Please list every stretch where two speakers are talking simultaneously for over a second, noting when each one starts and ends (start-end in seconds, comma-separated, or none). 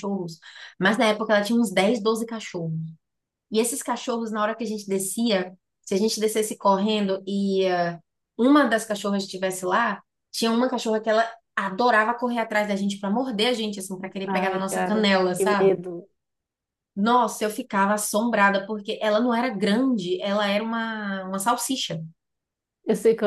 14.4-15.7